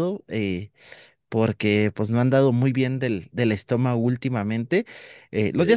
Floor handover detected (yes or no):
no